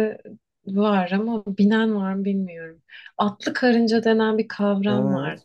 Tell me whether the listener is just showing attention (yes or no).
no